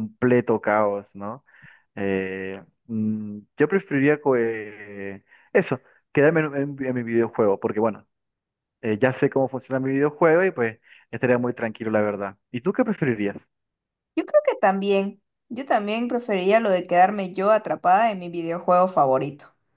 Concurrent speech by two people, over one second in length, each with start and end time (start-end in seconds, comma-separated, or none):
none